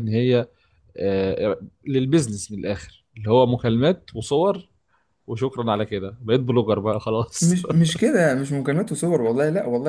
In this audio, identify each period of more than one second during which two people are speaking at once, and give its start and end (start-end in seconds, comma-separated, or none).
none